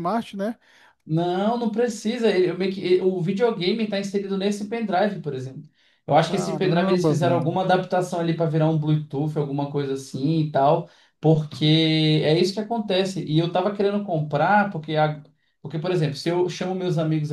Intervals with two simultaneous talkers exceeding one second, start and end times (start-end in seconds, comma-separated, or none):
6.2-7.6